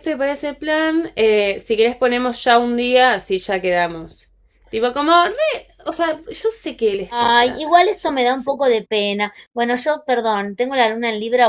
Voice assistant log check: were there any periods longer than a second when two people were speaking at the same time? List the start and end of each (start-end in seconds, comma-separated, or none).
7.1-8.5